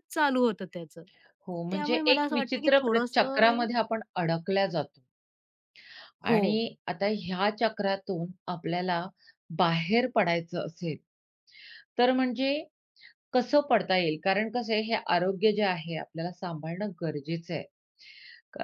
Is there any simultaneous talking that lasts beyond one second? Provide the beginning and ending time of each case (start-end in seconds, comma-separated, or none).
1.7-3.6